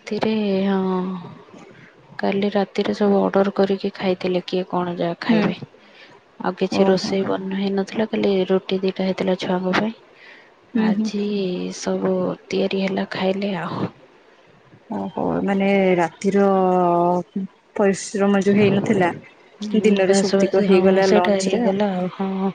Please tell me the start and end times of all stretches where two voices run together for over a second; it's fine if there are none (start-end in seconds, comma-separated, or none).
19.8-21.6